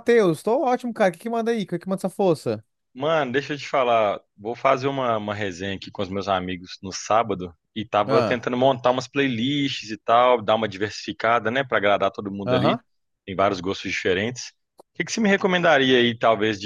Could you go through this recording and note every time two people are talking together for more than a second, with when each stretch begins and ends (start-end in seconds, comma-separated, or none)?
none